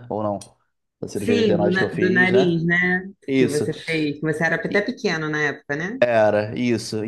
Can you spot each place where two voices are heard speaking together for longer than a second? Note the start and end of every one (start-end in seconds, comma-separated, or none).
1.1-2.6